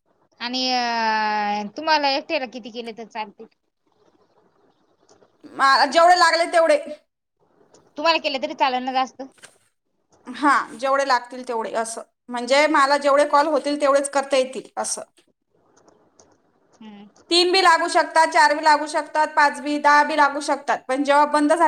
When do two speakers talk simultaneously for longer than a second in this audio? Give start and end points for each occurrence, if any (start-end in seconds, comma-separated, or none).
none